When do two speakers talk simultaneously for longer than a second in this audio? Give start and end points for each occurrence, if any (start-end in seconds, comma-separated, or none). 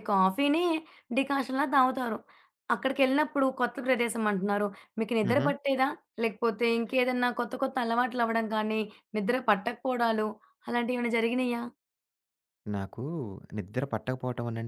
none